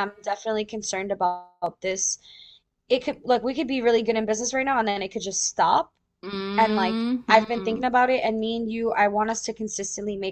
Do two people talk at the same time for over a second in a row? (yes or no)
yes